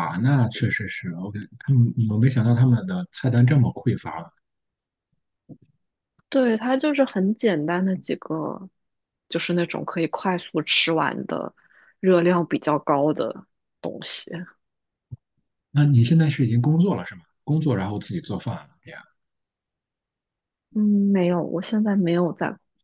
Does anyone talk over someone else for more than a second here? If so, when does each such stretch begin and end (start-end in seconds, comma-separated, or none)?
none